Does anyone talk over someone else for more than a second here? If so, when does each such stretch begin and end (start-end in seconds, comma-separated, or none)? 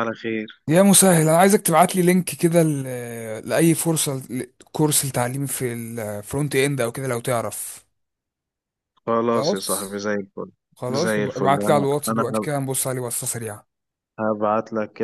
10.9-12.5